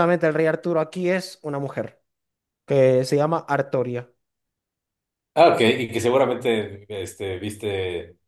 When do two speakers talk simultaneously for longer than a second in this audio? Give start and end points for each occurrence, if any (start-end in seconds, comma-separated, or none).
none